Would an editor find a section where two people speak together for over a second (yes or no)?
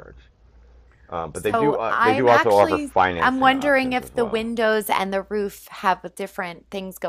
yes